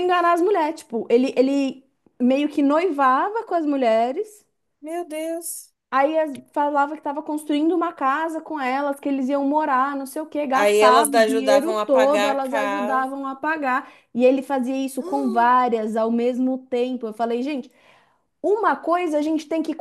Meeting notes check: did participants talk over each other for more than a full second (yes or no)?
yes